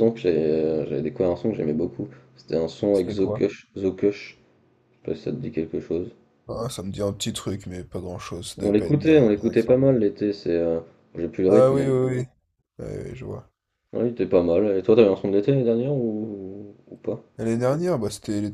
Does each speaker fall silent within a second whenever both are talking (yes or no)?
no